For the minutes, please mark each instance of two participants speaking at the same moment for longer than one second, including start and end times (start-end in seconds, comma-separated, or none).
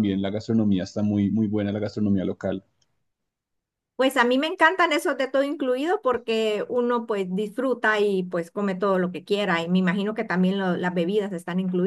none